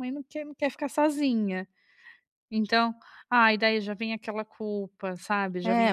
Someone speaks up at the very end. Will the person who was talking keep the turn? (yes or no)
no